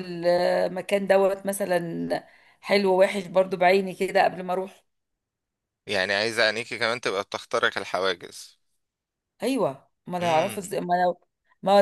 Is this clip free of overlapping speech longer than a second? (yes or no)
yes